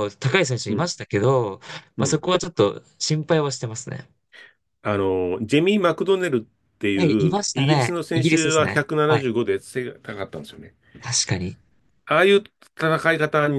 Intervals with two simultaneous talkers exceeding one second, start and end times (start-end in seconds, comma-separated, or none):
6.9-9.3